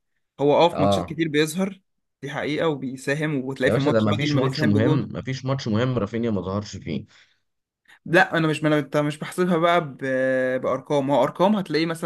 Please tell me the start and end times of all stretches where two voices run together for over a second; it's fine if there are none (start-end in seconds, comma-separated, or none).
3.6-5.1